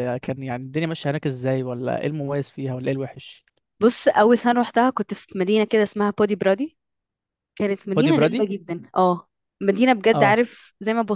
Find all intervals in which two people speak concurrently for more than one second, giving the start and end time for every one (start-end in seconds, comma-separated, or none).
none